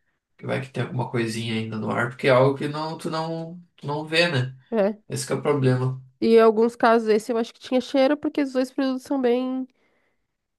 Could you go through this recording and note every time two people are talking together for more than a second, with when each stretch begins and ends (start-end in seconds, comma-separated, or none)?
none